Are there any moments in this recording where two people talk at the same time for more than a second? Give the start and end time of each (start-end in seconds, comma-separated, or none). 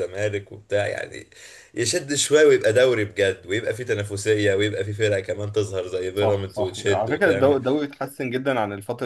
6.1-7.6